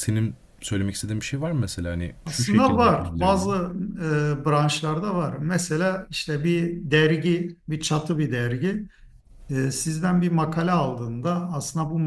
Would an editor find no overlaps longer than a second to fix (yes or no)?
no